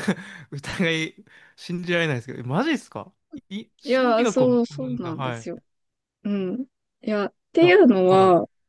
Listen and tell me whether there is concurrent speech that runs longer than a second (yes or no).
yes